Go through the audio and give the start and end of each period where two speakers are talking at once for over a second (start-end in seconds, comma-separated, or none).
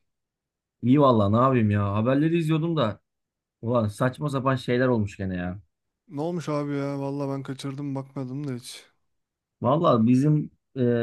none